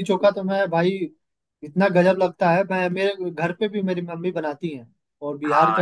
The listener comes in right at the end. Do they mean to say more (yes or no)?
yes